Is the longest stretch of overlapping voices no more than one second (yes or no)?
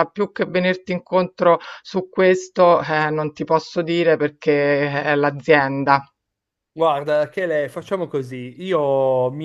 yes